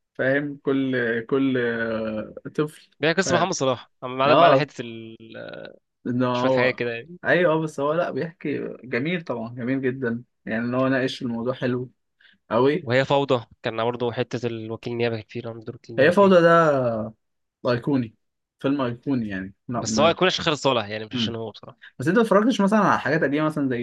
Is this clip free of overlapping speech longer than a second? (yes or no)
yes